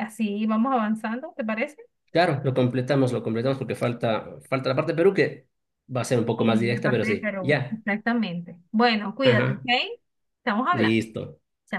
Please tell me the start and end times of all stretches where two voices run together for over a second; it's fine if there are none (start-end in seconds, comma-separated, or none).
6.4-7.8